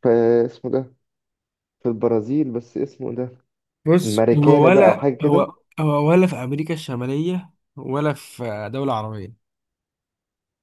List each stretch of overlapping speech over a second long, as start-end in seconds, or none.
4.0-5.5